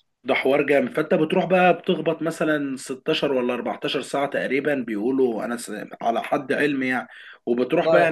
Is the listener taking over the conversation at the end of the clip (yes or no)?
no